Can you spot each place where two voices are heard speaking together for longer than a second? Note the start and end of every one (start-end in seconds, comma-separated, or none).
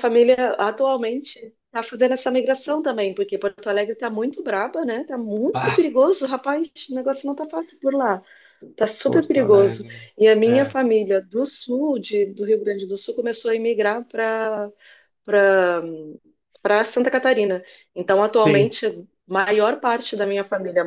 9.0-10.7